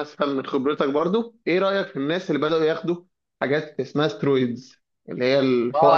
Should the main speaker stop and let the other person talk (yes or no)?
yes